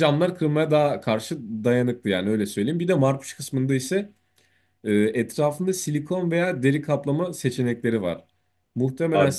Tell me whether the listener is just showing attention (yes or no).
no